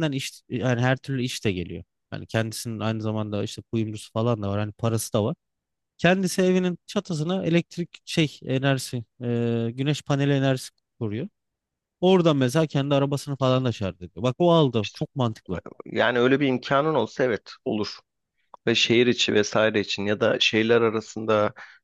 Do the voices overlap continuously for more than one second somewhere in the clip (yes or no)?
no